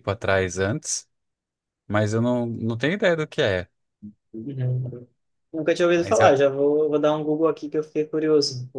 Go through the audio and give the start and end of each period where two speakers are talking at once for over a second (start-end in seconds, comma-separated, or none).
none